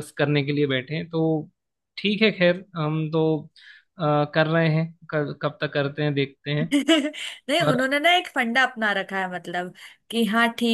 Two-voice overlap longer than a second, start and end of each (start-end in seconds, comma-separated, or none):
none